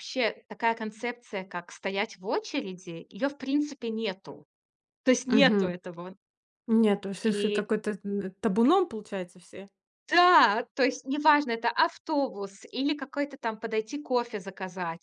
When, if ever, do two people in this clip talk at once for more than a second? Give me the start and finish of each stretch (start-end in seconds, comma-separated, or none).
none